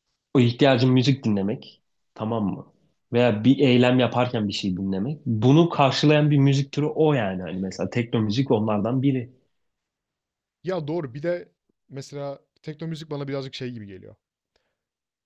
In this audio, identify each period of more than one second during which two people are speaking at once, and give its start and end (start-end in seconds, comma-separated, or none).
none